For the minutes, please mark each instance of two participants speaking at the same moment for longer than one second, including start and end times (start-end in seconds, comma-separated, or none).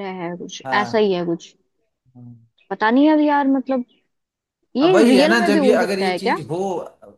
4.8-6.4